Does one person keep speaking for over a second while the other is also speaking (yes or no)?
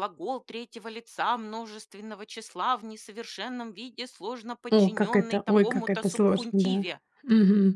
yes